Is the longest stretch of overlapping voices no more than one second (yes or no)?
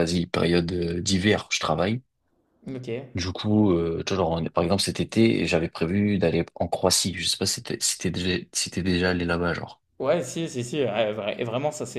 yes